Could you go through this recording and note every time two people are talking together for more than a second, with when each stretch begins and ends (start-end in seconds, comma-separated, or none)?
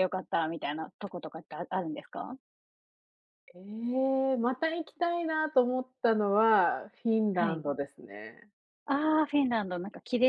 none